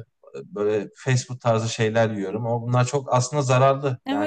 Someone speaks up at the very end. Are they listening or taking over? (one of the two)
taking over